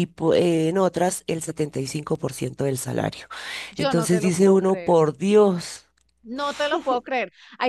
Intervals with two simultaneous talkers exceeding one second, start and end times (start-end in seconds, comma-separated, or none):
3.8-5.0